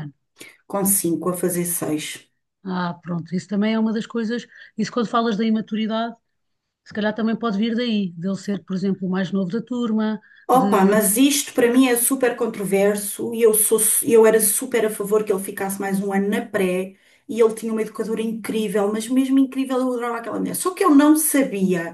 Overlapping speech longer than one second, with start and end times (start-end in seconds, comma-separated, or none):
none